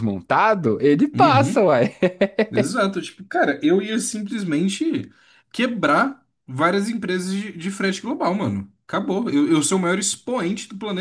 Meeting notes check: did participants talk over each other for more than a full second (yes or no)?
no